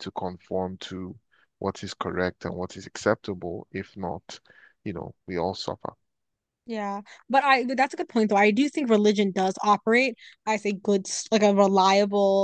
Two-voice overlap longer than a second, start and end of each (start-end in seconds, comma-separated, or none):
none